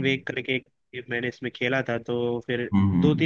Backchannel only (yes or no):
yes